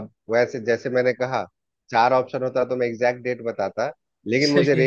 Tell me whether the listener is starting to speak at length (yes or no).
no